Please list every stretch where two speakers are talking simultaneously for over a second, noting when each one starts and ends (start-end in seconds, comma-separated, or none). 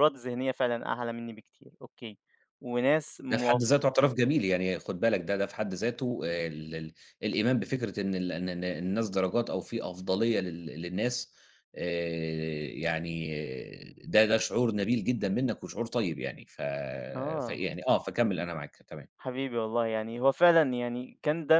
none